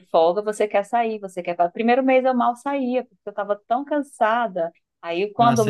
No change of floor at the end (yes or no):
yes